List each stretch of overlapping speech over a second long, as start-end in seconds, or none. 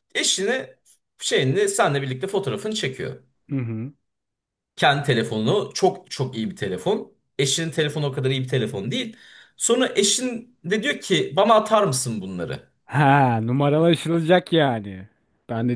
none